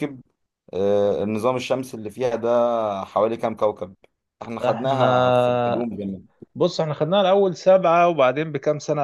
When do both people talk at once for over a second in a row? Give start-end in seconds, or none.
4.6-5.8